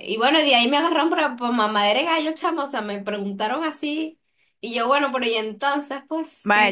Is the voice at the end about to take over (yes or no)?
yes